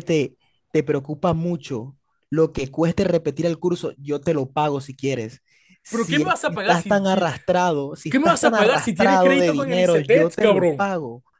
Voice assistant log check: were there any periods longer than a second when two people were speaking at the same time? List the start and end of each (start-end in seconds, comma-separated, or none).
5.9-7.3, 8.1-10.9